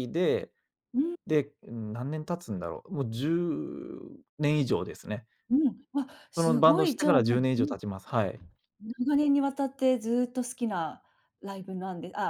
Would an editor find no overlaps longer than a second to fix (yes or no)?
no